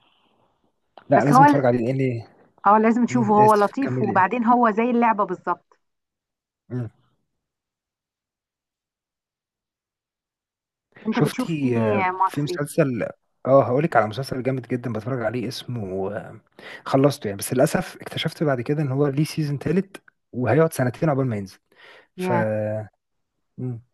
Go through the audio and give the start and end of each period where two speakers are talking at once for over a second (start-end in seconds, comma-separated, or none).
3.1-4.3, 11.1-12.6